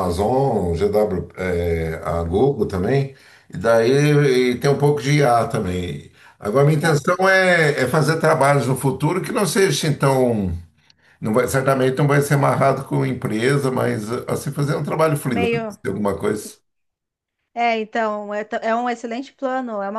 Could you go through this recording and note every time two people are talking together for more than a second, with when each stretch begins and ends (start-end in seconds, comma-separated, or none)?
none